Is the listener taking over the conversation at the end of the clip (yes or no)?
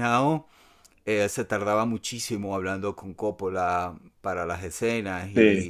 no